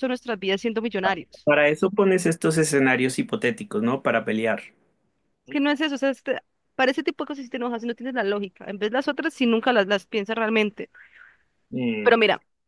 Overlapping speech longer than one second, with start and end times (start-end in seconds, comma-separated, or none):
none